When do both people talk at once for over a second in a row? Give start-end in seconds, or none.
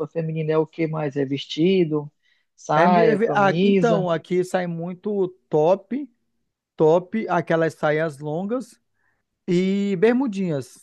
2.7-4.1